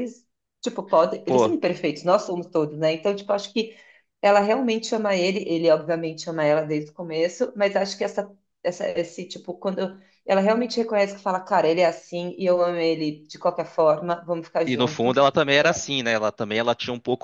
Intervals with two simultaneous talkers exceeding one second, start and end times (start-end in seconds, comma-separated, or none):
none